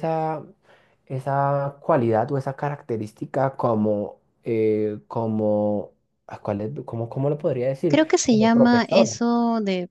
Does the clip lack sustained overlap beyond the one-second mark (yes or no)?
no